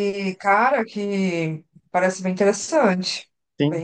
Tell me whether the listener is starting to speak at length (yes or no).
yes